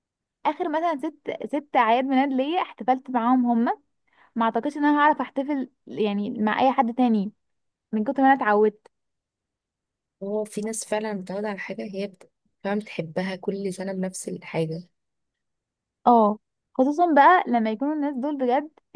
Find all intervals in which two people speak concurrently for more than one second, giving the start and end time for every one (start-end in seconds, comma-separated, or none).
none